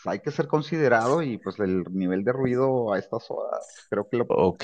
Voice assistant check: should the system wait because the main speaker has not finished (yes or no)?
no